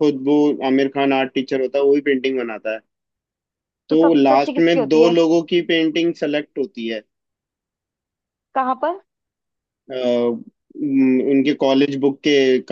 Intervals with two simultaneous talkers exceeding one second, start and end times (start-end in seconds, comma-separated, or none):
3.9-5.2